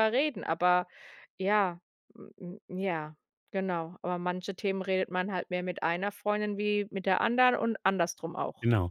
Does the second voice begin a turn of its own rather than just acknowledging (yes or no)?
yes